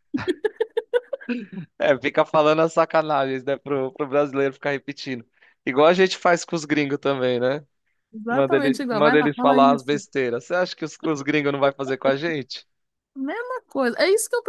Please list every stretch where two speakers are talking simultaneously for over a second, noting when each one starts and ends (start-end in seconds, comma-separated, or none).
8.3-10.0